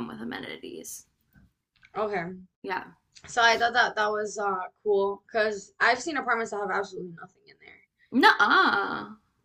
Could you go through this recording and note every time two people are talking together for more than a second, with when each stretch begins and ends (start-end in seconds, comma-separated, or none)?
none